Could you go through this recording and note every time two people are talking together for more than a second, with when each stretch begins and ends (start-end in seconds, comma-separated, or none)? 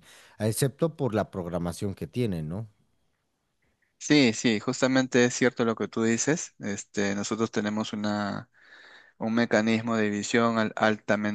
none